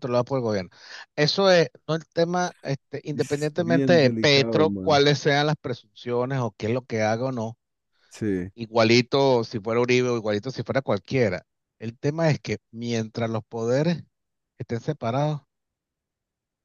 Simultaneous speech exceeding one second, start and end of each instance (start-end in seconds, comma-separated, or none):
3.1-5.0